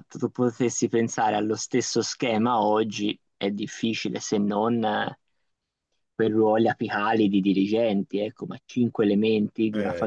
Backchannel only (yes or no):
yes